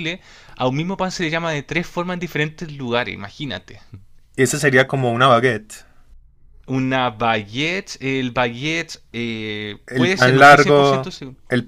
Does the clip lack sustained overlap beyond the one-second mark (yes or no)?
no